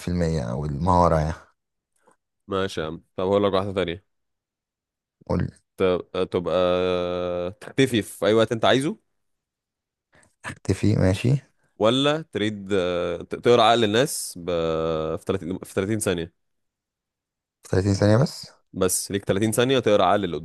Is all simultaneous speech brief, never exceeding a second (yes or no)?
yes